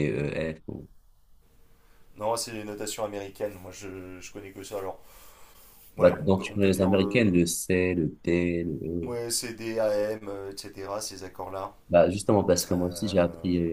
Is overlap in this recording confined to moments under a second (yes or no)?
no